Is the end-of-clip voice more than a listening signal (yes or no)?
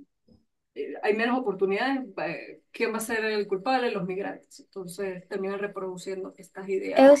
yes